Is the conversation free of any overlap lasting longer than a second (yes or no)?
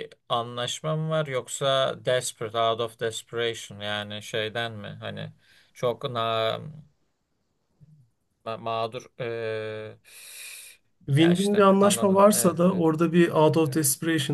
no